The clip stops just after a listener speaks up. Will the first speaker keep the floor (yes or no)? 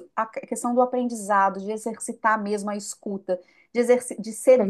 yes